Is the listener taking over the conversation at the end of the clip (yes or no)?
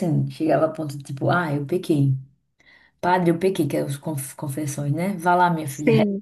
no